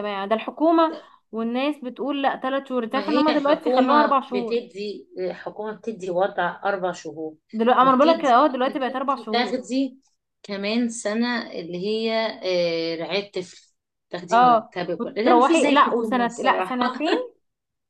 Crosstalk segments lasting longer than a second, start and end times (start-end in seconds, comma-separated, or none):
2.9-4.6, 7.8-9.6, 14.3-16.8